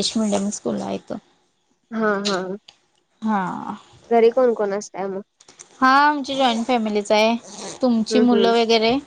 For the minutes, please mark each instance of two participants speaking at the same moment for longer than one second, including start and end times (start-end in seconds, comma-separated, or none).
none